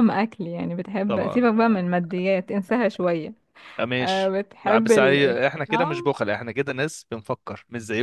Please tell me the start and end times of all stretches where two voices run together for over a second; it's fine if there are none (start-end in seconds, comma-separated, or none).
4.0-6.1